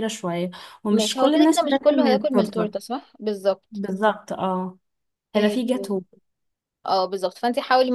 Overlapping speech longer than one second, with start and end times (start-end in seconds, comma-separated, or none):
0.9-2.7